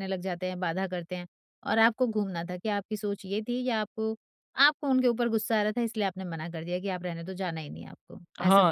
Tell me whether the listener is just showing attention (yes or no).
no